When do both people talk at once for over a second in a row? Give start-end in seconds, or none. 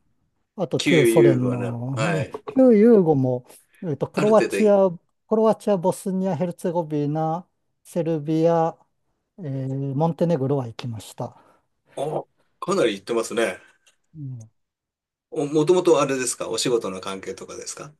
0.8-2.3